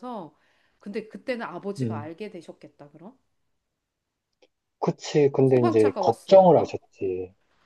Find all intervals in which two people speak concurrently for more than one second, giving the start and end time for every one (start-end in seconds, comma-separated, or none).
5.4-6.8